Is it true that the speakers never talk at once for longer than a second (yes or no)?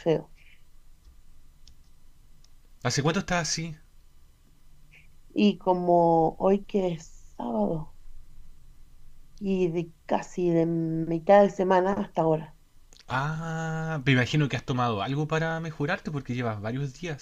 yes